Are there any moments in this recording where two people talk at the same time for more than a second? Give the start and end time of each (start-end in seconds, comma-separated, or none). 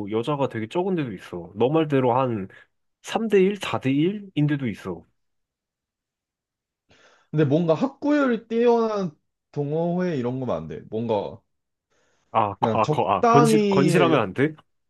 12.6-14.2